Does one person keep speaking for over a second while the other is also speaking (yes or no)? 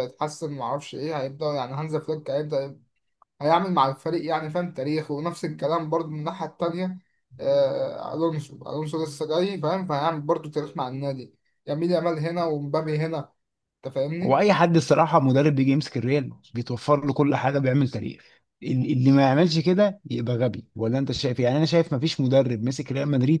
no